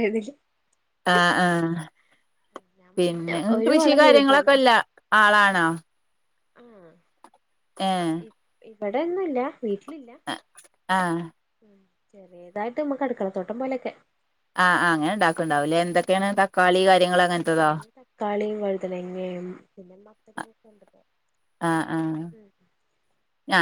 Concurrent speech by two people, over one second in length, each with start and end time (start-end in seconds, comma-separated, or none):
3.0-4.6